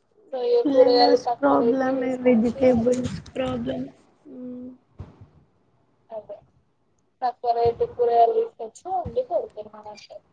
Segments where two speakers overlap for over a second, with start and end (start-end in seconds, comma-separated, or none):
0.8-2.6